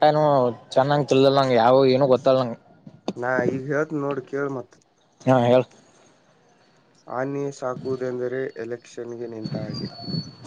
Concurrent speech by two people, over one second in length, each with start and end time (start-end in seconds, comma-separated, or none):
none